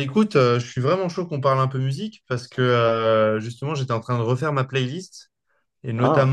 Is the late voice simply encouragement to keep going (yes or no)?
yes